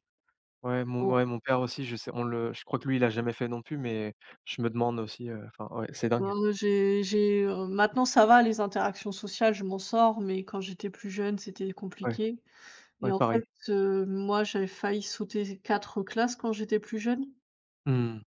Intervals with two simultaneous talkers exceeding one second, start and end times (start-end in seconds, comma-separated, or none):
none